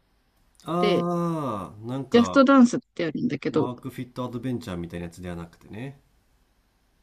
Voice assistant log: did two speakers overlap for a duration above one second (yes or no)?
no